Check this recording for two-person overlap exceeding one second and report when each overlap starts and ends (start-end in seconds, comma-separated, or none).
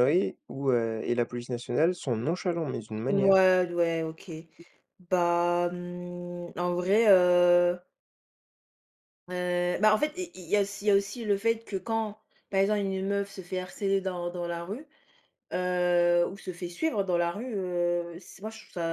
none